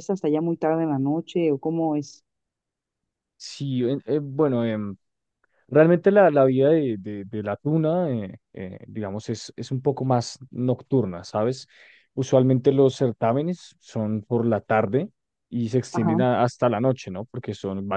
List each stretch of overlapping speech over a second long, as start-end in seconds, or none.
none